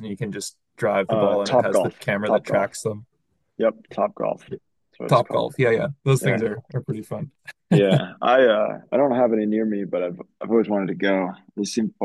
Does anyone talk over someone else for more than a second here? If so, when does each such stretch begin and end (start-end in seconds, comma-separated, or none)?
1.1-2.7